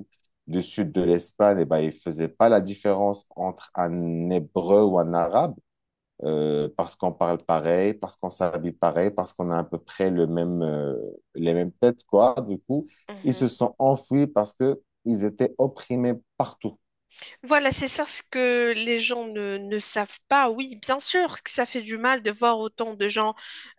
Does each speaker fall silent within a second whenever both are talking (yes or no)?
yes